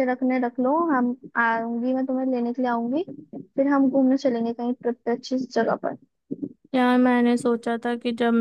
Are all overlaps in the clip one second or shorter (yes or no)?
yes